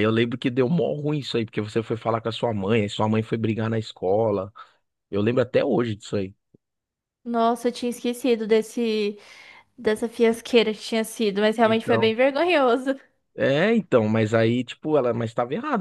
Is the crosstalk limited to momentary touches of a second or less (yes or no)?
yes